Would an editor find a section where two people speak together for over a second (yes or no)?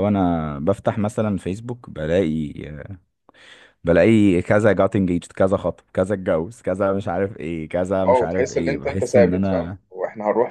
yes